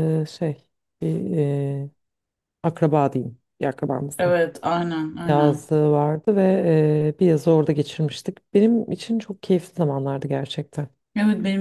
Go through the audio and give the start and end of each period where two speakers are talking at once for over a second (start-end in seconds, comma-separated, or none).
none